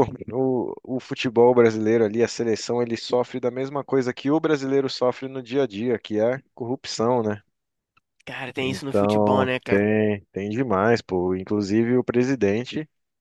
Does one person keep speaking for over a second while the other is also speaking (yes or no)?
yes